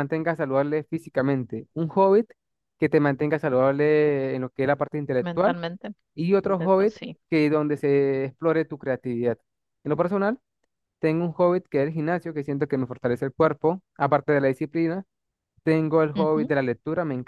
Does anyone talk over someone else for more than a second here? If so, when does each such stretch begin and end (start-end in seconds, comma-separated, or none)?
none